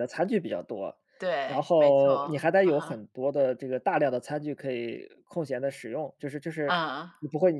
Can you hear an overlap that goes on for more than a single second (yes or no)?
yes